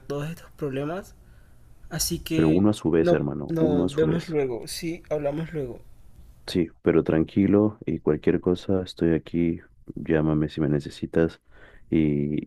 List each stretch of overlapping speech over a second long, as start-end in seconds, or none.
2.3-4.4